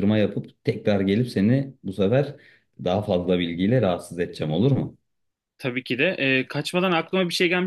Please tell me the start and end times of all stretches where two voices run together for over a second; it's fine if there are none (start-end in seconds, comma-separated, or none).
none